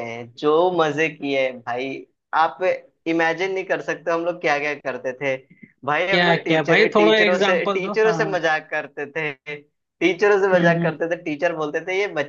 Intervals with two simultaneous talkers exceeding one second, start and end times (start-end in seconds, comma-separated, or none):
6.1-8.4